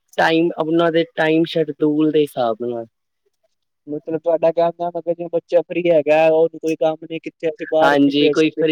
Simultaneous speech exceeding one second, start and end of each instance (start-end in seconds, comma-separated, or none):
none